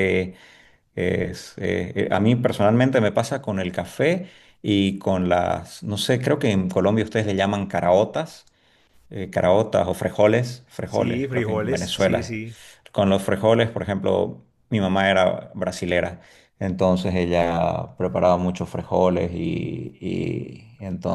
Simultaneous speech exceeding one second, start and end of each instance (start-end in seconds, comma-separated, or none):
10.8-12.4